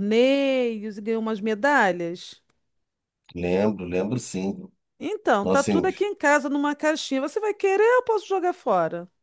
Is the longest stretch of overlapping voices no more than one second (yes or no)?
yes